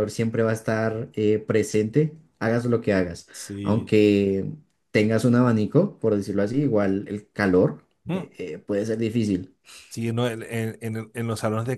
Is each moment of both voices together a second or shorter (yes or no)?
yes